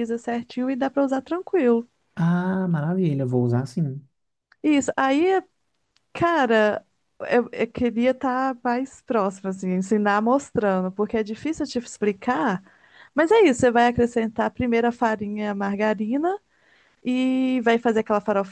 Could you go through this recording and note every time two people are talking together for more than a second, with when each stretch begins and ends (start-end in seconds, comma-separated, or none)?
none